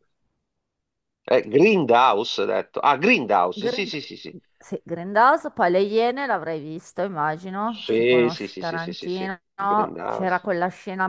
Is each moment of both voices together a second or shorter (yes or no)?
no